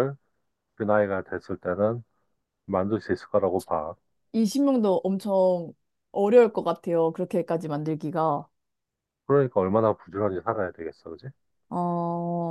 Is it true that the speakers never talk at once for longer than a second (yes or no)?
yes